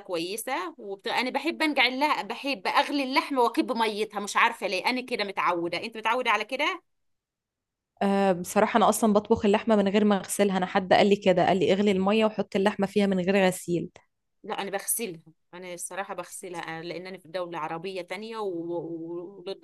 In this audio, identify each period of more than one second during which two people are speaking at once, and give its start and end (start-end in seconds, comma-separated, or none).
none